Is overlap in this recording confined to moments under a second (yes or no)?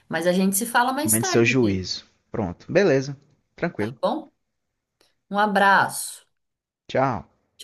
yes